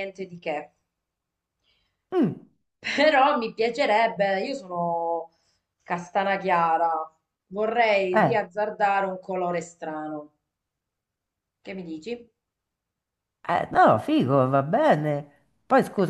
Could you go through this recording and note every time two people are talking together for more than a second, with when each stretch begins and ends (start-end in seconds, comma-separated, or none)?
none